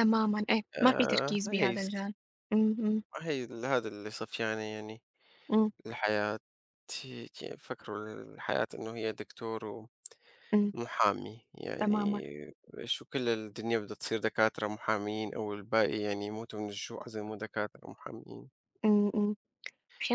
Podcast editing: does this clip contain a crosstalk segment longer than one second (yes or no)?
yes